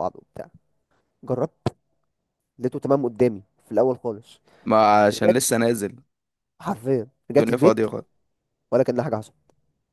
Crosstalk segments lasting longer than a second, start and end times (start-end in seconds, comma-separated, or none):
none